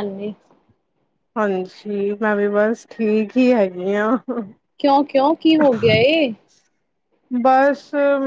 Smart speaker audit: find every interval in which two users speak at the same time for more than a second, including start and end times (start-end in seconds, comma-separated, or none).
none